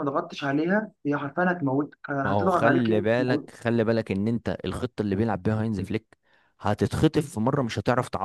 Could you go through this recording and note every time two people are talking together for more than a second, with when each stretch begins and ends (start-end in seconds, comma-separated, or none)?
2.2-3.5